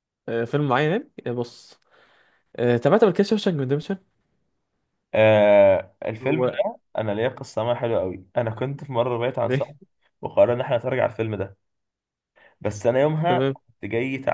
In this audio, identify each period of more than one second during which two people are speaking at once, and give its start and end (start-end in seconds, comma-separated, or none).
none